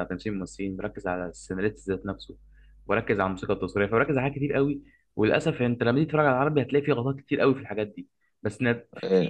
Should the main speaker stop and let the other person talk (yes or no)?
no